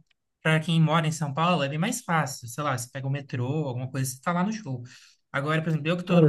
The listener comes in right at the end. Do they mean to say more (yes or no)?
no